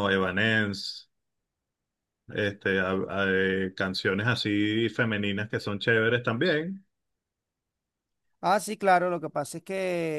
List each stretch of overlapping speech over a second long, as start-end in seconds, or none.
none